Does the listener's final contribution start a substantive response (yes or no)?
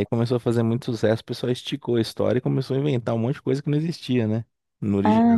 yes